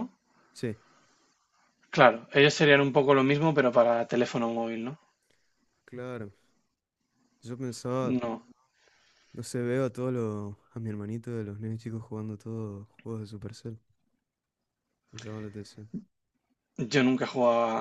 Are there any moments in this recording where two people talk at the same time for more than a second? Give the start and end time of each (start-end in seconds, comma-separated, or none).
none